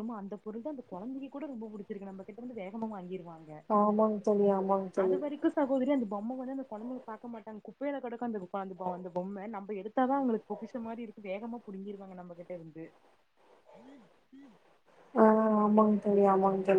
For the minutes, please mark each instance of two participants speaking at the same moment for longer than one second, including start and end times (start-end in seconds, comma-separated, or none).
none